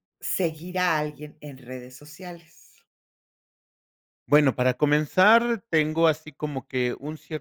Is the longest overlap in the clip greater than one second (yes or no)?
no